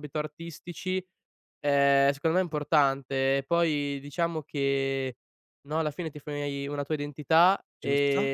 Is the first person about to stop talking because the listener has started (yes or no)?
no